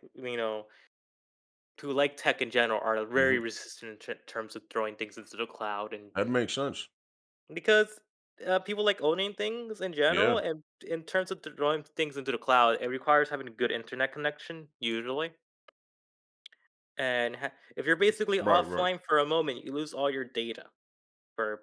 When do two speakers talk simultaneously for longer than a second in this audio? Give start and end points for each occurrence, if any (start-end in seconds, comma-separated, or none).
none